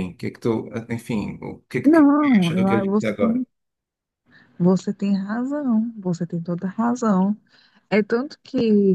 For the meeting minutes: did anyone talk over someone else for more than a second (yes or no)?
yes